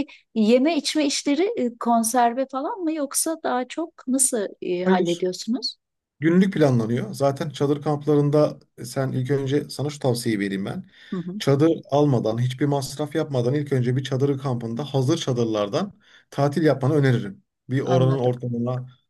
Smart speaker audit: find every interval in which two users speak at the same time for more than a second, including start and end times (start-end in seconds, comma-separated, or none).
none